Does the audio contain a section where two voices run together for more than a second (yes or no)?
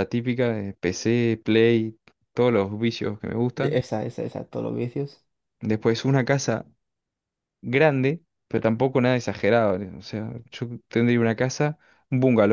no